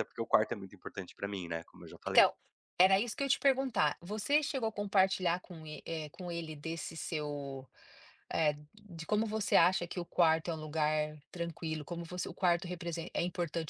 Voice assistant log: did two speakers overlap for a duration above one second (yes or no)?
no